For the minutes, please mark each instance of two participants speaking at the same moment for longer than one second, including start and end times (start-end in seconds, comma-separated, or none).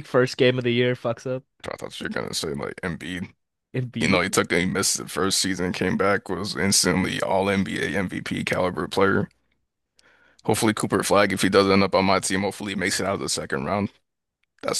none